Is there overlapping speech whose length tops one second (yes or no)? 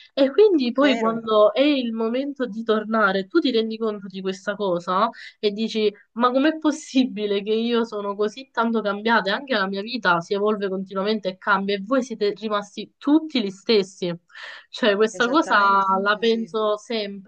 yes